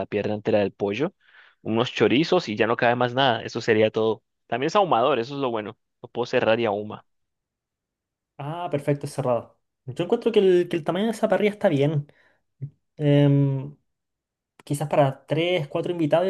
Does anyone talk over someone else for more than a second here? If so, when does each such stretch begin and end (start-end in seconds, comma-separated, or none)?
none